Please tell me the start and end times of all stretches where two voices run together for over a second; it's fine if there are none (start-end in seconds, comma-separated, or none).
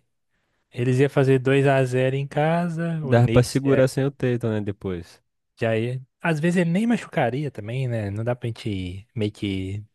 none